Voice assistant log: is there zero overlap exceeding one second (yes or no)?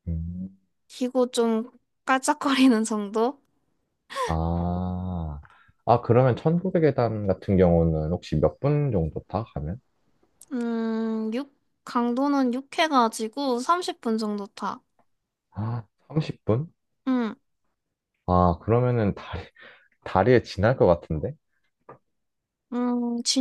yes